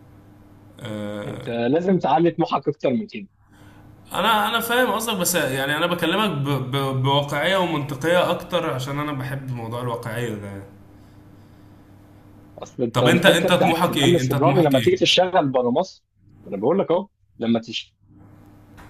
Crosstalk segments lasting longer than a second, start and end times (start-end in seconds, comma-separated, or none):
12.9-15.0